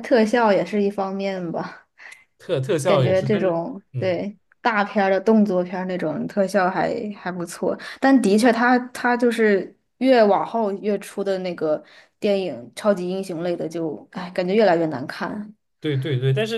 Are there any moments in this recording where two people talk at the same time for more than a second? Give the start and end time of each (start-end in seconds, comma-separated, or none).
2.8-4.2